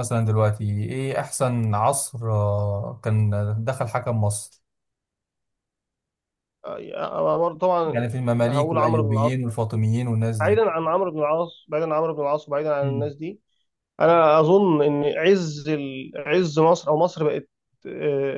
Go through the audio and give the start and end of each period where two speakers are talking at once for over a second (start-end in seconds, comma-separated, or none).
7.8-9.3